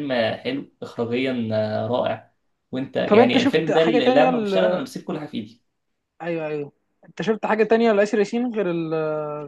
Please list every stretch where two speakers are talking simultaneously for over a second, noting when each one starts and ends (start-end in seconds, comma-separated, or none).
3.0-4.9